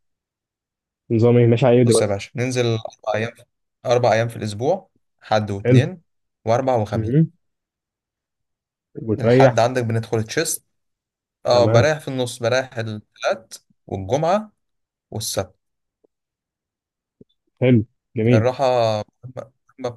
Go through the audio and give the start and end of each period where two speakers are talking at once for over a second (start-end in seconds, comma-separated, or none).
none